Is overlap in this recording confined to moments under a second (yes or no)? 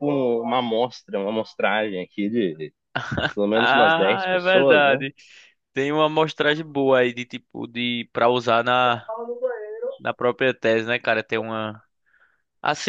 no